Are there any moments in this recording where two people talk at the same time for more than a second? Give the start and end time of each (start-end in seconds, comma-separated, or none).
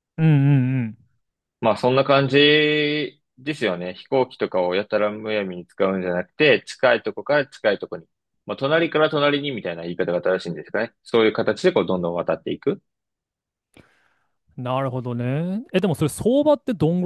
none